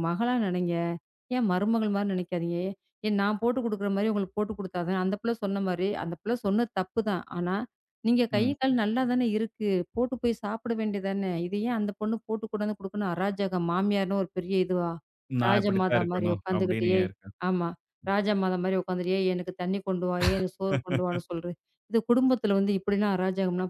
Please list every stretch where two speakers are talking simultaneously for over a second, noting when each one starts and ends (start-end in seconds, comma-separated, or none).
15.5-17.1